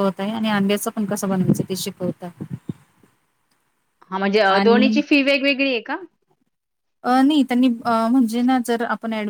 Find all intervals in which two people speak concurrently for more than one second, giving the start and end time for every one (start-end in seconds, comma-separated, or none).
none